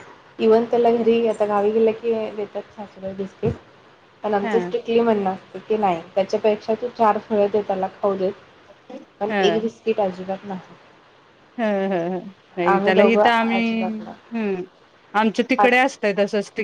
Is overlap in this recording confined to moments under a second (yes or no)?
yes